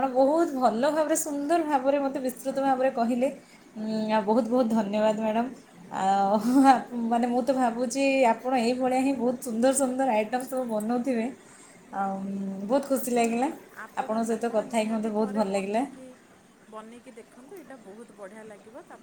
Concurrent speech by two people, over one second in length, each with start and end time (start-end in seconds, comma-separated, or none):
14.0-15.8